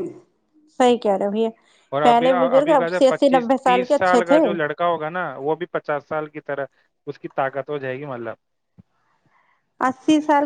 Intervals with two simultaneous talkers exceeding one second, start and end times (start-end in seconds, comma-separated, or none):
2.0-4.4